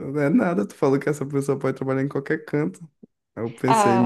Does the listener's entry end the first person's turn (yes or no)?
no